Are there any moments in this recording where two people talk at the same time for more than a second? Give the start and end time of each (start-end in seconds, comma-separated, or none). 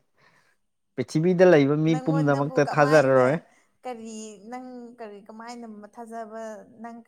1.9-3.4